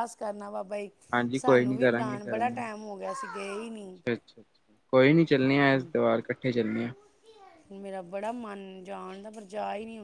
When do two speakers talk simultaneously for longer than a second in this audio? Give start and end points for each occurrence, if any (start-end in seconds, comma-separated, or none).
1.4-2.7